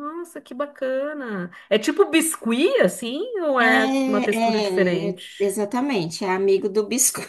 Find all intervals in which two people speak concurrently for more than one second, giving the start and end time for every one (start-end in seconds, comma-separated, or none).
3.6-5.6